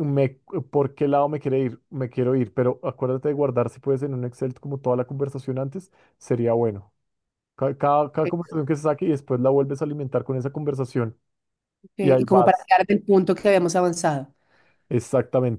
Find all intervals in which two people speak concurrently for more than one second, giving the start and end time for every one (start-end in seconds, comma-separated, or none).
none